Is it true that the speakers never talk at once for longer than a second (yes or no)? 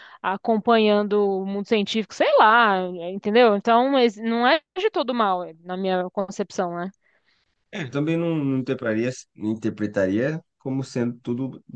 yes